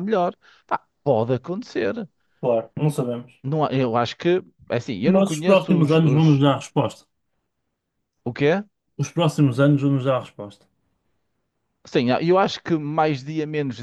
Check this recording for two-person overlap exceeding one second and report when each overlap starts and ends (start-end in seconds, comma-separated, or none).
5.0-6.4